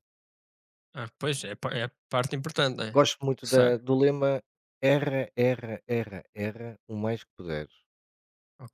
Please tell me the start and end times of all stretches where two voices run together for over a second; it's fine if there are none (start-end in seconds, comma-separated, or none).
none